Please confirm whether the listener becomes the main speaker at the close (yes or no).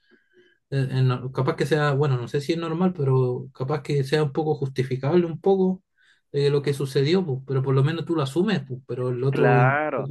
yes